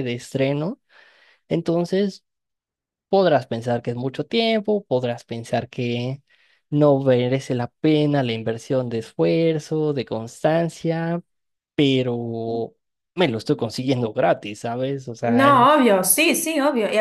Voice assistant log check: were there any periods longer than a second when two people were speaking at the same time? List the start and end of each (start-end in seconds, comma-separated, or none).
none